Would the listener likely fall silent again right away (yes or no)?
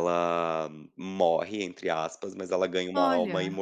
yes